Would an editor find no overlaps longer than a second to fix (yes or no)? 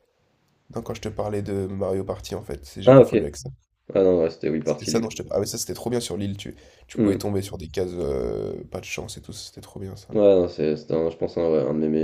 yes